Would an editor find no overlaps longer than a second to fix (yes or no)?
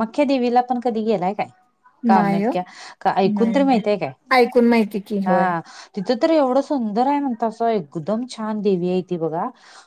yes